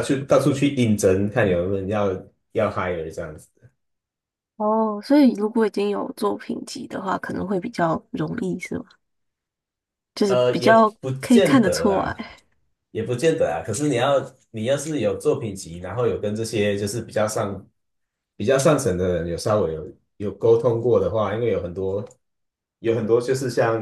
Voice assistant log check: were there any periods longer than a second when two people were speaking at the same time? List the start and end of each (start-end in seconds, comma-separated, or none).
10.3-12.3